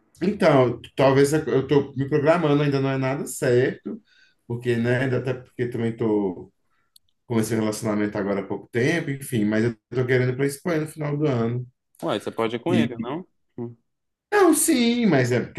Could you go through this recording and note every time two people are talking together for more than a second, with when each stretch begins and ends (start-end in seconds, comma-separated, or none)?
none